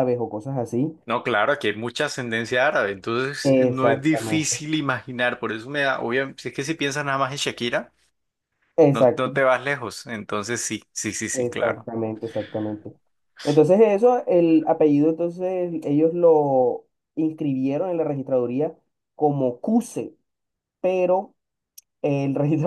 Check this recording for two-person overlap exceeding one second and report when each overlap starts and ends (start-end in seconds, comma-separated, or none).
3.4-4.6